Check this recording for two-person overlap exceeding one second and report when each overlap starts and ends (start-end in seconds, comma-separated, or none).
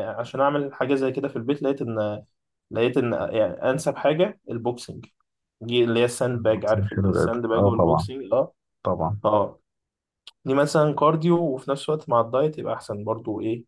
6.3-8.1